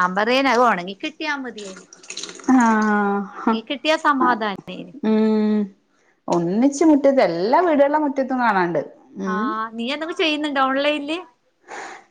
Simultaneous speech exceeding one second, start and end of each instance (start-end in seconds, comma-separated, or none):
none